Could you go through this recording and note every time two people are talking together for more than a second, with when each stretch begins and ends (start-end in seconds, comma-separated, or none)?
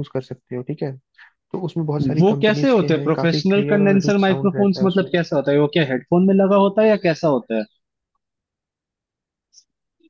2.2-5.1